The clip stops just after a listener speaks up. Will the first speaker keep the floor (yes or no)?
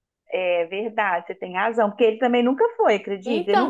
no